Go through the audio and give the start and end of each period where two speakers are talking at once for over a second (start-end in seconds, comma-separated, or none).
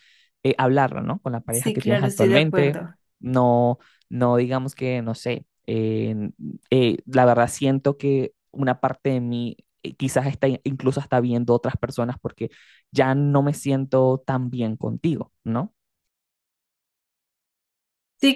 1.5-2.8